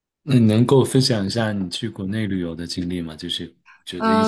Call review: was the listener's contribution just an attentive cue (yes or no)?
no